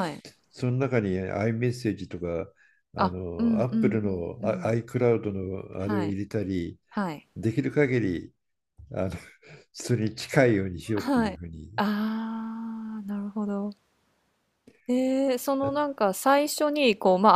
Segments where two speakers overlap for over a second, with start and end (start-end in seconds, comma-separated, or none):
3.0-4.7